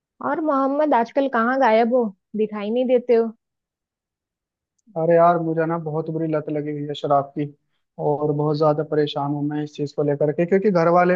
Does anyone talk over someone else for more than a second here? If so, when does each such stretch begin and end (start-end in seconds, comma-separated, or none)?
none